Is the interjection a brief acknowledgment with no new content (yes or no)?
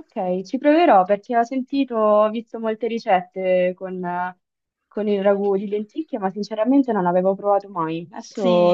no